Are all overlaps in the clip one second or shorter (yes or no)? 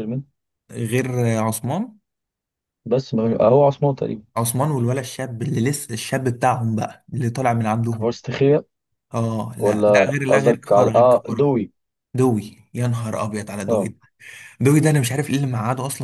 no